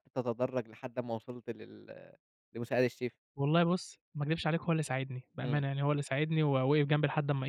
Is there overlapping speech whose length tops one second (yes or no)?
no